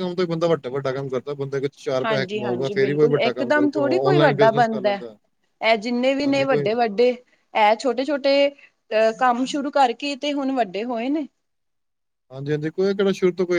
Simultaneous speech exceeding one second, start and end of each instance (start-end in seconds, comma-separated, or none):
2.0-5.0